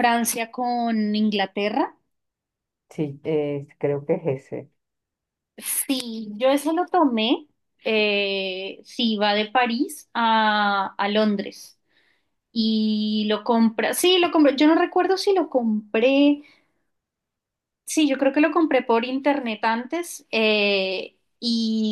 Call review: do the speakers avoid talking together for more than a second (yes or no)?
yes